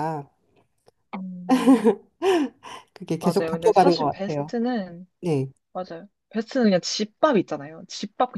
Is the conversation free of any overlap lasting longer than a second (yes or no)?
no